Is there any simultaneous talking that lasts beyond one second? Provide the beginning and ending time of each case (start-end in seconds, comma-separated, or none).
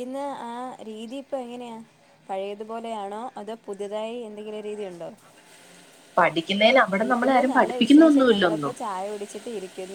7.0-8.7